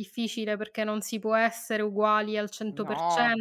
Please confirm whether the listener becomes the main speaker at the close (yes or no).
no